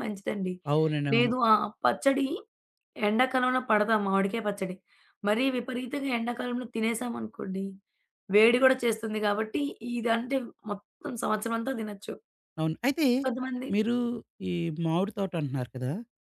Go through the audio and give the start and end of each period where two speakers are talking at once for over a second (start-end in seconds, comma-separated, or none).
none